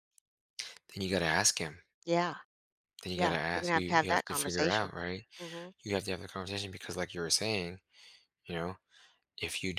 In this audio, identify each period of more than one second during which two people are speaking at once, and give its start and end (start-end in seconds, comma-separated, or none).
3.2-4.9